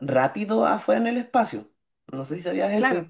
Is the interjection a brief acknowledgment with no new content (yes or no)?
yes